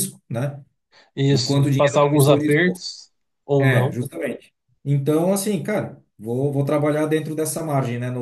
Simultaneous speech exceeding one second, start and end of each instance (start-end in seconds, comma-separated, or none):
1.3-2.8